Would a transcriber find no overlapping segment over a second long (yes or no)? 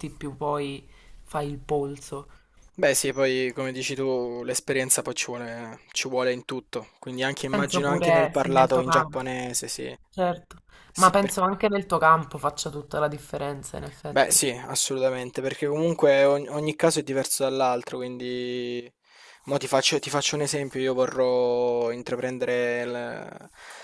no